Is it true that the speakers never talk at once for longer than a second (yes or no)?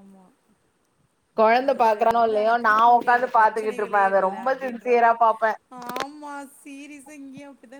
no